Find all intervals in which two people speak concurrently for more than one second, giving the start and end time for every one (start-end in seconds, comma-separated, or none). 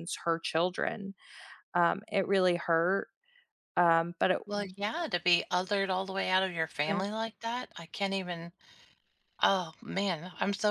none